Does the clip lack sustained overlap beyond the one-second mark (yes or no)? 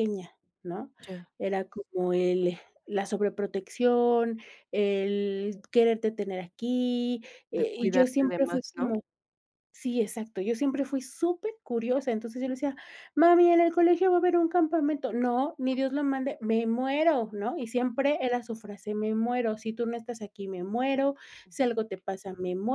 no